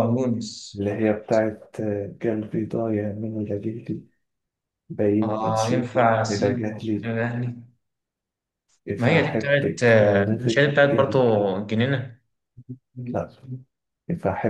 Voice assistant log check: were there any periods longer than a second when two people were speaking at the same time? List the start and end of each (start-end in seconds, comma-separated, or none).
5.2-7.1, 8.9-11.2